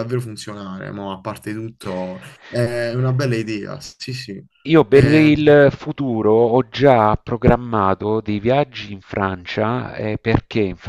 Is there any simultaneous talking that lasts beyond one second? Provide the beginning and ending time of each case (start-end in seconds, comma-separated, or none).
none